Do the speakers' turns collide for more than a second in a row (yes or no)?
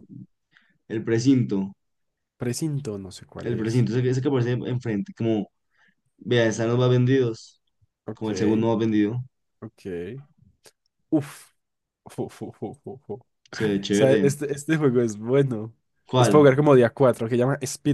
no